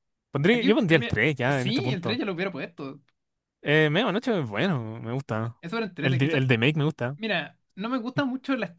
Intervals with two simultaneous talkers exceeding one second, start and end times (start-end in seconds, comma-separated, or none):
0.5-2.2